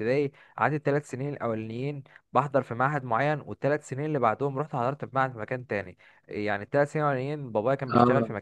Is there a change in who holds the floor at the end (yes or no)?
no